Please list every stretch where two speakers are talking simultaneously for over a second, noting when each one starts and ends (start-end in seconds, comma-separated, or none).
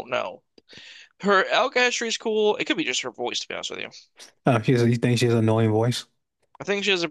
none